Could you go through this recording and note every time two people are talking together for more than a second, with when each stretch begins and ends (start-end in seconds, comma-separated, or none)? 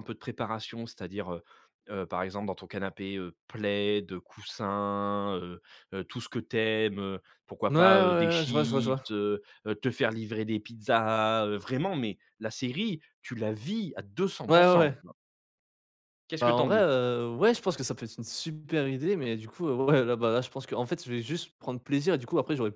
7.7-9.0